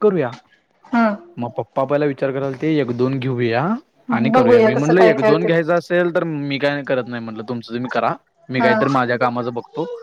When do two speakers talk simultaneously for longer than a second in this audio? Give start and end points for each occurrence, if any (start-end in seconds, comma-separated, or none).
4.2-5.5